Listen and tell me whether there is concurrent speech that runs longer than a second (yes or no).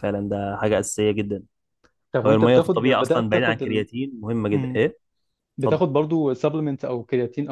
yes